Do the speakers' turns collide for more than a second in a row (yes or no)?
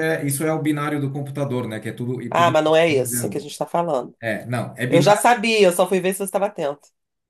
yes